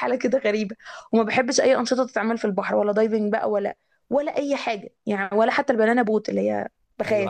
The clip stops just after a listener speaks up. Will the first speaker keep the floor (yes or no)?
no